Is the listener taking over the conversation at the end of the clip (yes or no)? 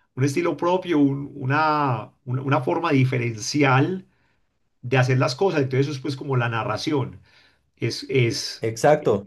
yes